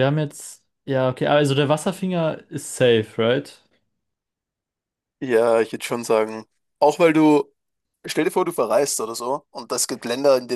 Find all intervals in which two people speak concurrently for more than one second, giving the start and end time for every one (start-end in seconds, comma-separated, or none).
none